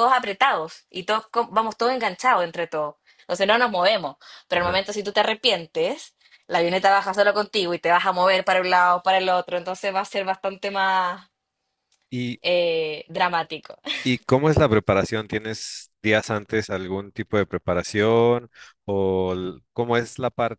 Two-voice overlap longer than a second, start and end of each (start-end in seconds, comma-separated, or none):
none